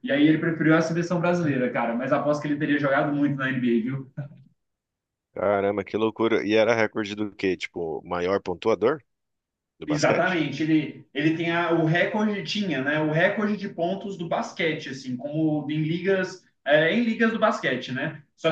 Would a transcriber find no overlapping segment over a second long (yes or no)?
yes